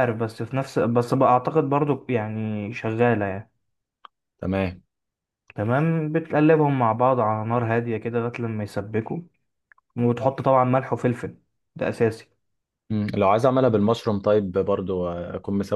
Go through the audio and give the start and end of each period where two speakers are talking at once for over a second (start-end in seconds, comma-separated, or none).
none